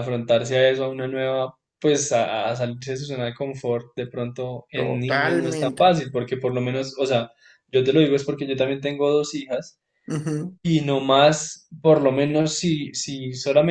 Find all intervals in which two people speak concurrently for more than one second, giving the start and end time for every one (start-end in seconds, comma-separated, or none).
4.7-6.0